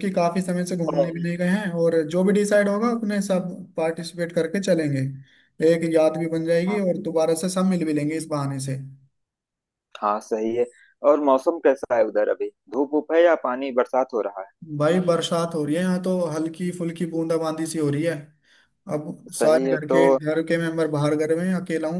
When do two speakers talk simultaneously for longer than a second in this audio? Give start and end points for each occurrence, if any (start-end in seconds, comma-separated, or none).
none